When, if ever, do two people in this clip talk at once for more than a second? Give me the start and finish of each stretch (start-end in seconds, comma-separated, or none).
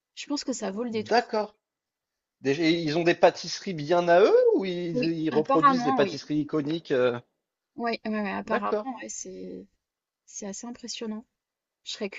4.9-6.2